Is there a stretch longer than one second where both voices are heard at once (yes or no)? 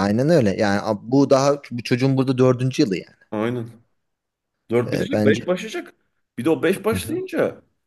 no